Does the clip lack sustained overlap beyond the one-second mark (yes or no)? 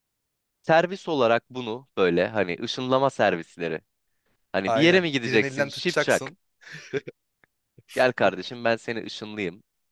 no